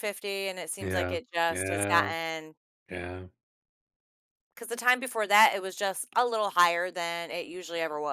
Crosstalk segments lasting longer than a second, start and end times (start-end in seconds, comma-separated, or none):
0.8-2.1